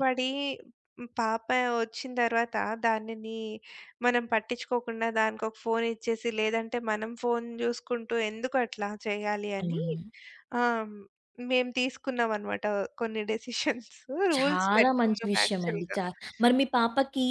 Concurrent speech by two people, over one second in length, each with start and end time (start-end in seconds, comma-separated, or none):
14.4-16.0